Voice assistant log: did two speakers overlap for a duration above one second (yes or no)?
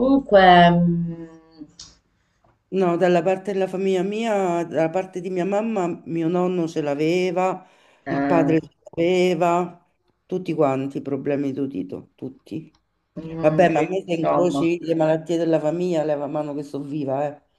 yes